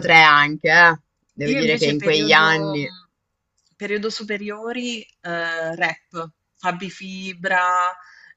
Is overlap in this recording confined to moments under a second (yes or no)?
no